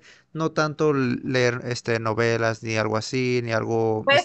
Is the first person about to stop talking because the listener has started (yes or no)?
yes